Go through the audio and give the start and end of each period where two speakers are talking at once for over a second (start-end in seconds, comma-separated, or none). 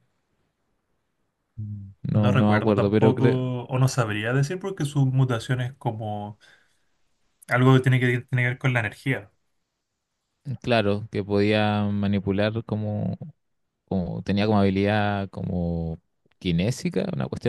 2.0-3.5